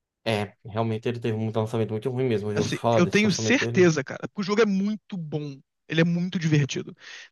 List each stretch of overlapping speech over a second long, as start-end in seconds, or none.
2.5-3.9